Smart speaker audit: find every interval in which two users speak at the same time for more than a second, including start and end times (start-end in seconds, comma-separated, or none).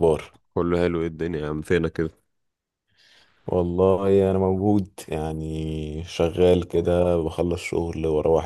none